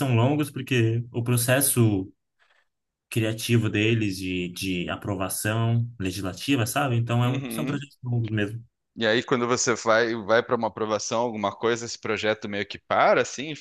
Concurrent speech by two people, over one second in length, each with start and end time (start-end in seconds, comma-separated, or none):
none